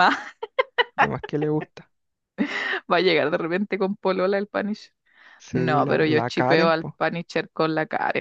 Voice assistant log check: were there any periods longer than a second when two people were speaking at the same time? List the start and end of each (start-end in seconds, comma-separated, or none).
5.5-7.0